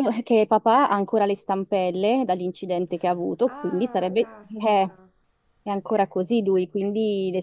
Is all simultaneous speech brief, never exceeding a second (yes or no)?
no